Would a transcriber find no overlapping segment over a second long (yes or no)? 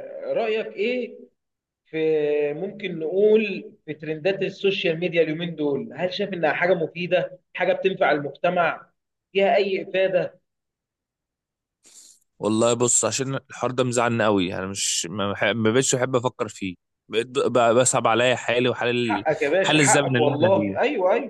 no